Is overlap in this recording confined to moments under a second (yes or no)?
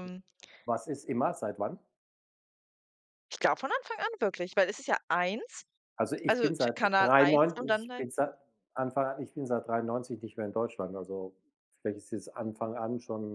no